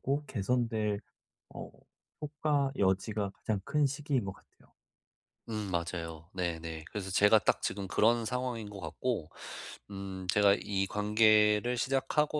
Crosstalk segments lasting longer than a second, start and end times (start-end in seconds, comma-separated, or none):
none